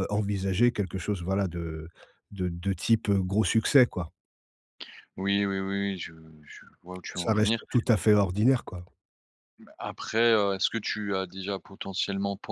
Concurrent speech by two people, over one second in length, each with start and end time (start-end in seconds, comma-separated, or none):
none